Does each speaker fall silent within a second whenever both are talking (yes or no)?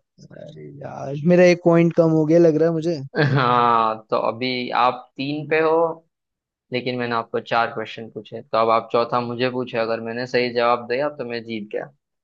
yes